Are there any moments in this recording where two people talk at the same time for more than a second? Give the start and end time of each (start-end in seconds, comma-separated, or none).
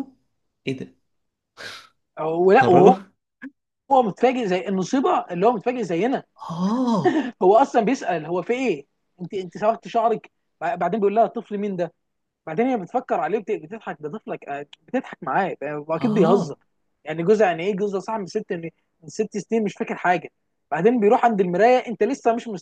none